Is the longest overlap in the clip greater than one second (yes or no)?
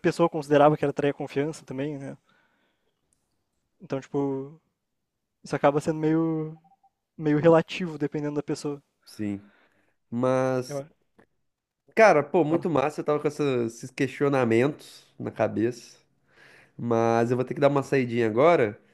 no